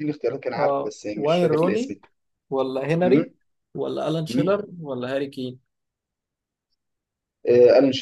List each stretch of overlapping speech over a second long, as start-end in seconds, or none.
0.6-1.9